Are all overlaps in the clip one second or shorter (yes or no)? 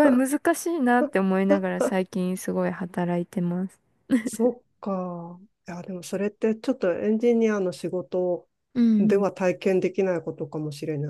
yes